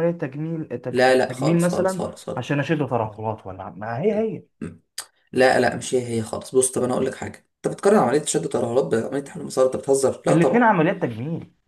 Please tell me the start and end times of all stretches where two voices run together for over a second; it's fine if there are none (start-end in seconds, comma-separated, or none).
0.9-2.5